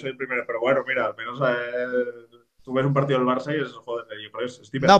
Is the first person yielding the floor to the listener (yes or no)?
yes